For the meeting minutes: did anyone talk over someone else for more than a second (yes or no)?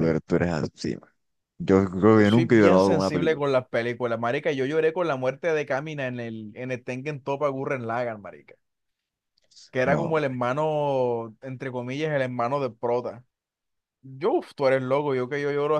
yes